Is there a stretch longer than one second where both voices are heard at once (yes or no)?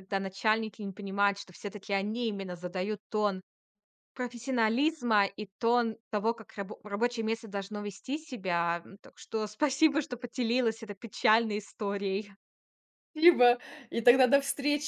no